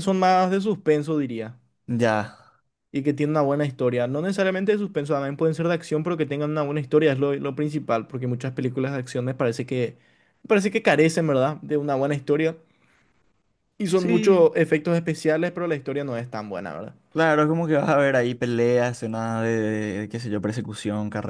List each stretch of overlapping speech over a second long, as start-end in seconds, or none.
none